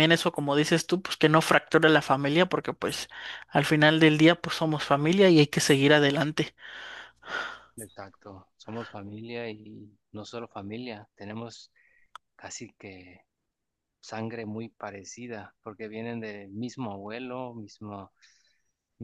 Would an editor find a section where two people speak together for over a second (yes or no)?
no